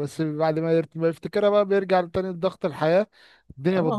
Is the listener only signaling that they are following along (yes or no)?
no